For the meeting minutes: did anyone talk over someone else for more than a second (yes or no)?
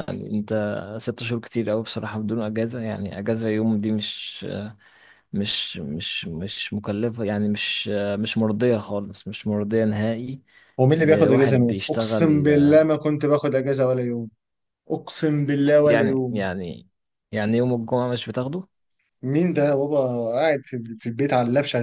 yes